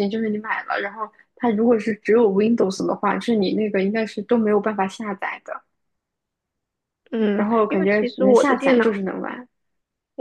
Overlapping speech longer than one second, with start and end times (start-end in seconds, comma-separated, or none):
7.4-9.0